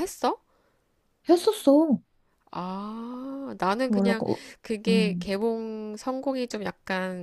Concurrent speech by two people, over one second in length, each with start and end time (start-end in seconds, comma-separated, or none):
none